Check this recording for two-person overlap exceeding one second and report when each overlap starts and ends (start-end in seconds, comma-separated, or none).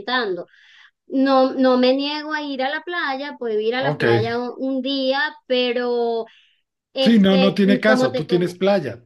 7.0-8.5